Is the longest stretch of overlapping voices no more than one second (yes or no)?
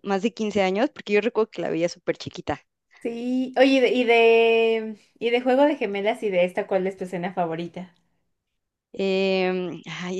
yes